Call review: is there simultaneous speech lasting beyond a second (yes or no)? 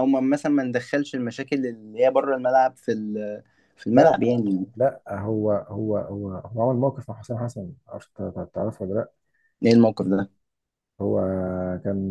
no